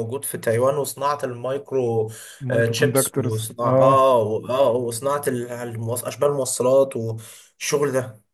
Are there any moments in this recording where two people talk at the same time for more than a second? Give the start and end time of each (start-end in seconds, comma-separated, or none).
2.5-4.0